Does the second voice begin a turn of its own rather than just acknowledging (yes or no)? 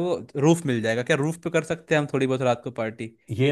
yes